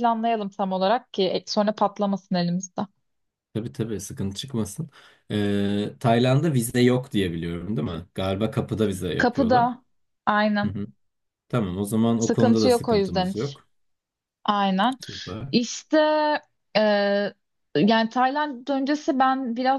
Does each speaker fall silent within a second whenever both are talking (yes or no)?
no